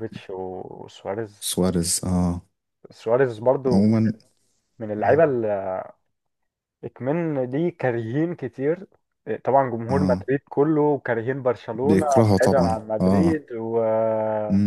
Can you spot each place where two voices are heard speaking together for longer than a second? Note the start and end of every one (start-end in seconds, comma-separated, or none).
11.8-13.4